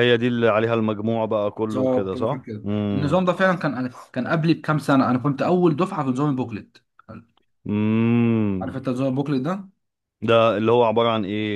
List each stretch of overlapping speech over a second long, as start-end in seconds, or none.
1.7-3.2